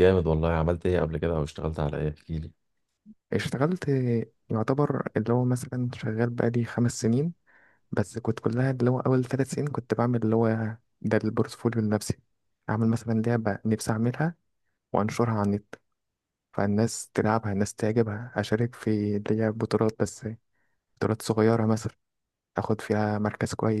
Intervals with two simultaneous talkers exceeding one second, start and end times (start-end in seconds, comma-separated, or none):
none